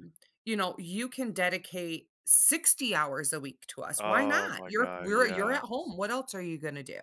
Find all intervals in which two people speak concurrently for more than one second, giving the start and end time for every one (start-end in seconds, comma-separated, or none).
4.0-5.6